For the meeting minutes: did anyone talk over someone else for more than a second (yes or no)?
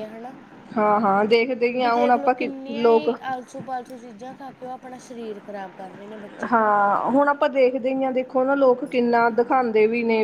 yes